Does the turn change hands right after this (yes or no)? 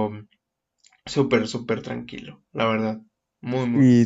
yes